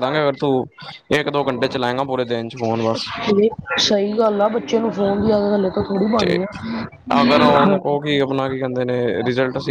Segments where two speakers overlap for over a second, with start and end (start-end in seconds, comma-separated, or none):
none